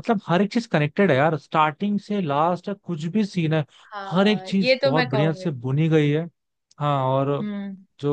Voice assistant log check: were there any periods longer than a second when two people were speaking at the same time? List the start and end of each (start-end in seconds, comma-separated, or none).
4.1-5.5